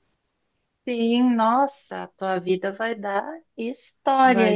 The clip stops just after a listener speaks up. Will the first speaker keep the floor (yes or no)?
no